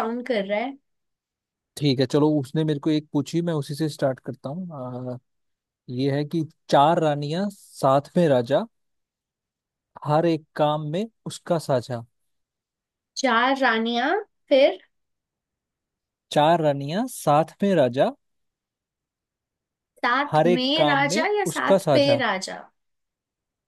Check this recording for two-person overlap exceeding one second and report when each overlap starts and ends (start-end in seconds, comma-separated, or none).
20.3-22.2